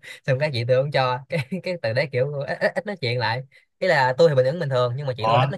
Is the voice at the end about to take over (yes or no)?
no